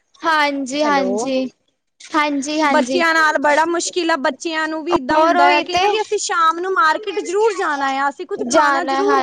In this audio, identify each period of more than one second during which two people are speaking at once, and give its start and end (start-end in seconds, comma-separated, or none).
none